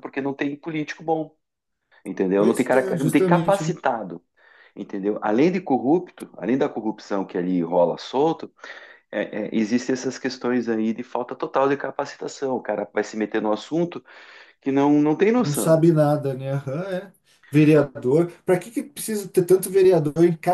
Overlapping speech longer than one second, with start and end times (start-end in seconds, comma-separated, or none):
2.4-3.8